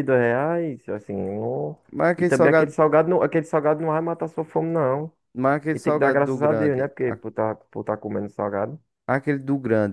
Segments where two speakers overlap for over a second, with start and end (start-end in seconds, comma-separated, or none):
5.7-7.2